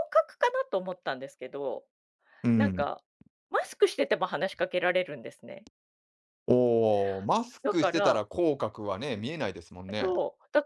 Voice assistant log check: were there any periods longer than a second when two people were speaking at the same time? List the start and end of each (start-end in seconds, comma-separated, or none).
none